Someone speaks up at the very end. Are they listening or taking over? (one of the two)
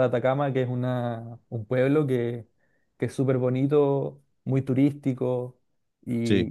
listening